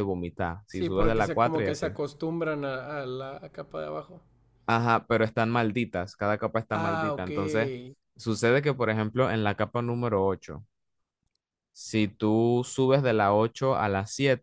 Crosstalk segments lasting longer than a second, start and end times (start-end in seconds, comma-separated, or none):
0.7-1.9